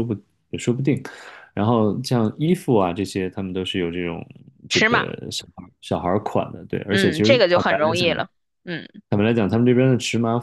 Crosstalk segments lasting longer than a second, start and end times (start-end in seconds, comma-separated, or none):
6.9-8.1